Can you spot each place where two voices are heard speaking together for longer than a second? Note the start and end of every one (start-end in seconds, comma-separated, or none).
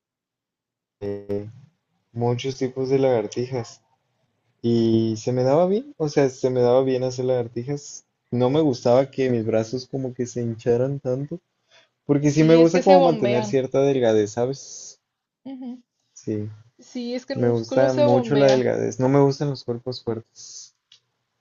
12.3-13.6, 17.4-18.7